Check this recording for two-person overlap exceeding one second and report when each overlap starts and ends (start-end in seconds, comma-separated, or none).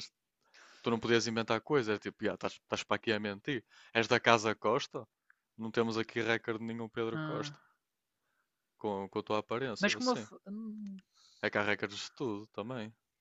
none